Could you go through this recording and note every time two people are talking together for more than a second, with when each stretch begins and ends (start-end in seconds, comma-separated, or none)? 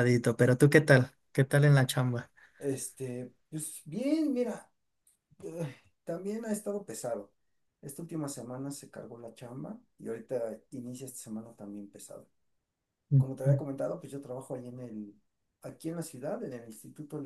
none